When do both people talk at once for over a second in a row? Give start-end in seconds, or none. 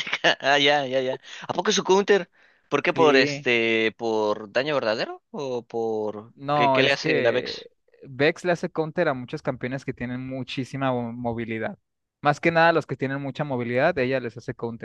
6.3-7.7